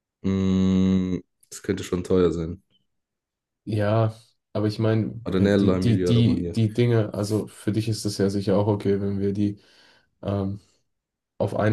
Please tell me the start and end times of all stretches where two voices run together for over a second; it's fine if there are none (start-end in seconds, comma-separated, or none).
5.2-6.6